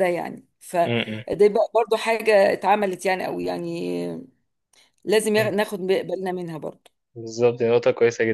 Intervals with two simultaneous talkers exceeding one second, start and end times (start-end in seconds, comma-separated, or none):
none